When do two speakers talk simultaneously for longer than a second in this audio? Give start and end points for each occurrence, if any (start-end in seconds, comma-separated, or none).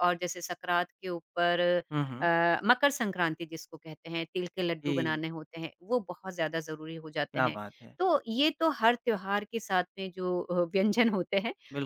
none